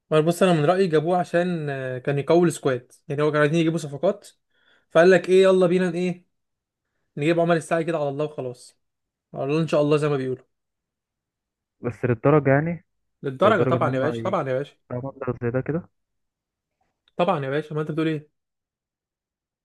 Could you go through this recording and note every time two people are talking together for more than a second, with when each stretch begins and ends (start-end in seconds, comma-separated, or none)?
13.4-14.8